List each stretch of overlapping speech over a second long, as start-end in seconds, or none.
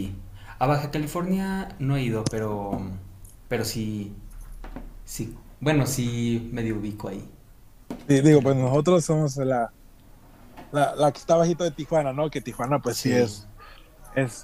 none